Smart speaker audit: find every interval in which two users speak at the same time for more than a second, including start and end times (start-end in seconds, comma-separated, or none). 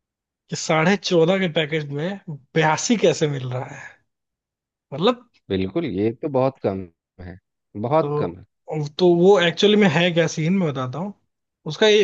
none